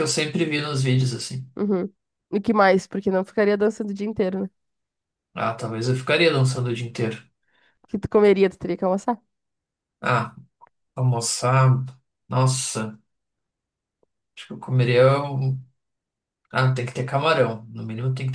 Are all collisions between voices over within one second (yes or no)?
yes